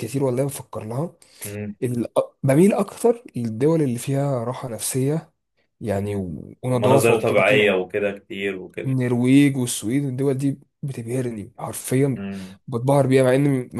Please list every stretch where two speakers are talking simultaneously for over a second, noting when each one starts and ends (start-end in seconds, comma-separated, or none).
6.0-7.7